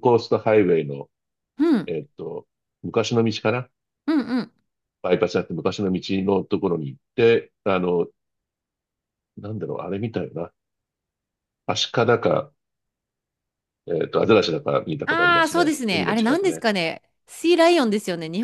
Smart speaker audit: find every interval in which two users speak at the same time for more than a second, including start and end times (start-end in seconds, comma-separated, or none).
15.1-16.6